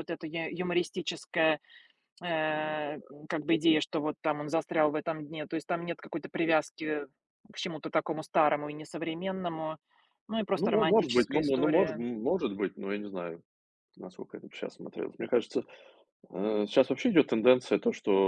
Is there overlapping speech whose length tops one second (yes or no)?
yes